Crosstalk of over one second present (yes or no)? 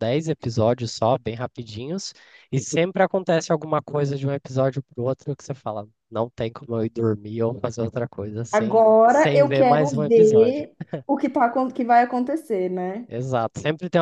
yes